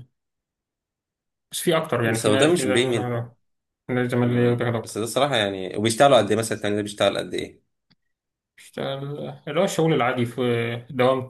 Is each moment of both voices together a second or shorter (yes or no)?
no